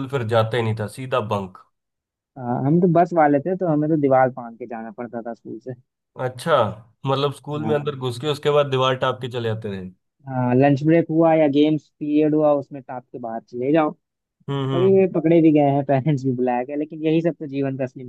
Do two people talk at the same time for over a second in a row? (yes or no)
no